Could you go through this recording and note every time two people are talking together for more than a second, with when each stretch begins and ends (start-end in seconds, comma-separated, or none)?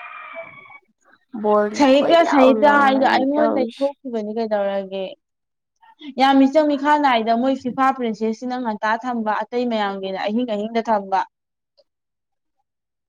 1.8-3.9